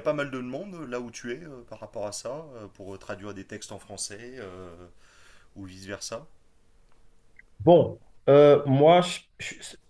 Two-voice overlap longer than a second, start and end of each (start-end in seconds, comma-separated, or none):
none